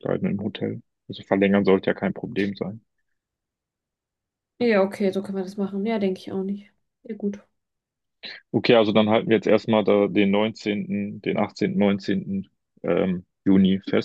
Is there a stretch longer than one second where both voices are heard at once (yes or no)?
no